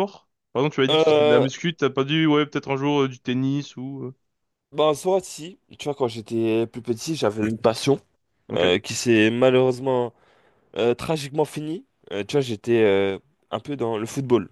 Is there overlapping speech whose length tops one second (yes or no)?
no